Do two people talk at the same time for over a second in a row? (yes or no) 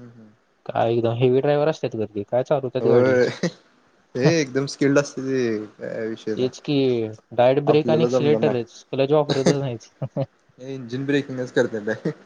yes